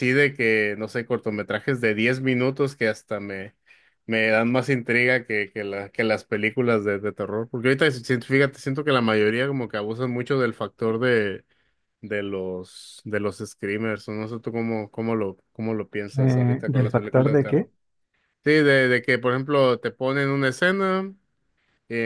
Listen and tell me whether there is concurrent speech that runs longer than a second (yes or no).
yes